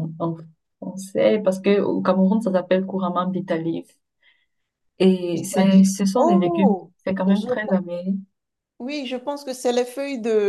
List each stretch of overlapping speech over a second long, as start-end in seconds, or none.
5.3-7.5